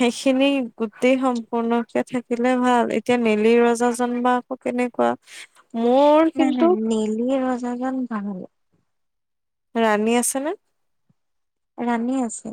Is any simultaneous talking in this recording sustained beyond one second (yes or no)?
no